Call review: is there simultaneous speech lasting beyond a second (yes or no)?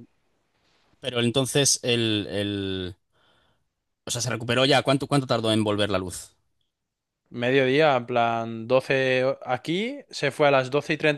no